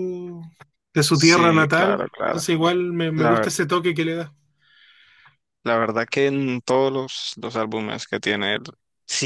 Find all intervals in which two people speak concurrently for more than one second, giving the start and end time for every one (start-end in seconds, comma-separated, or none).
1.1-2.5